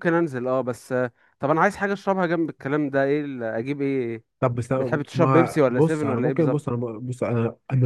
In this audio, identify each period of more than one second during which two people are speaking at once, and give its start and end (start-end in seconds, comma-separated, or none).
5.1-6.7